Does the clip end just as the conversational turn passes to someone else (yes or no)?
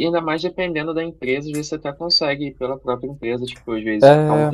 no